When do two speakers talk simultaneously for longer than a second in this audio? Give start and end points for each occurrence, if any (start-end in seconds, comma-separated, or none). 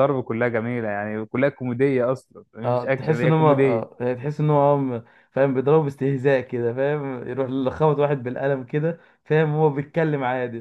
2.6-3.9